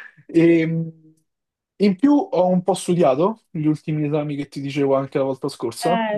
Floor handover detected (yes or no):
yes